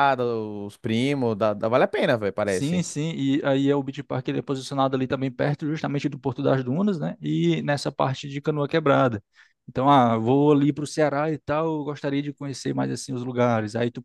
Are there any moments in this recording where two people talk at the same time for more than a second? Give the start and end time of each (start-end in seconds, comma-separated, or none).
none